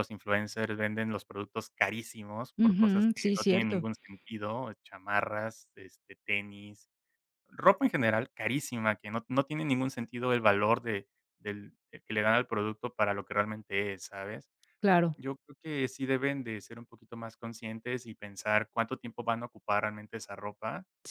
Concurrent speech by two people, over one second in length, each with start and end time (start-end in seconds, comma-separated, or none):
2.6-3.8